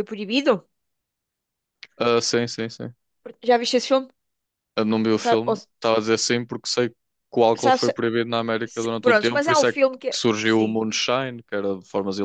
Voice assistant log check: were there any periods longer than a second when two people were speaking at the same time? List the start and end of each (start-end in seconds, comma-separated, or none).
8.7-10.8